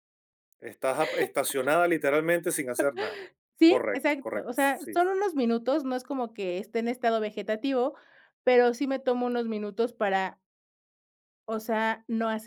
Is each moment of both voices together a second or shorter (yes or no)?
no